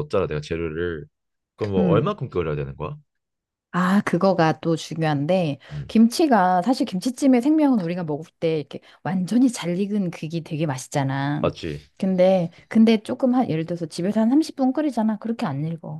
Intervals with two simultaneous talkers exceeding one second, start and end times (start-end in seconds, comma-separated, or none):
none